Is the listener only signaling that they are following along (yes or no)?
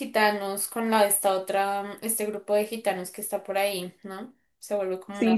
no